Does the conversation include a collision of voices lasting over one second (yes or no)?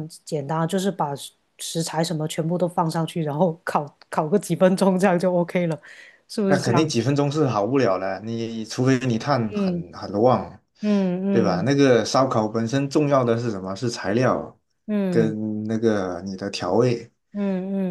no